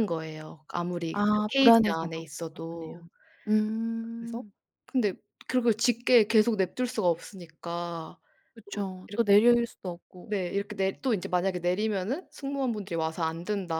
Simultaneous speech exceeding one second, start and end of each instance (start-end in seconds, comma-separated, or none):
1.1-3.0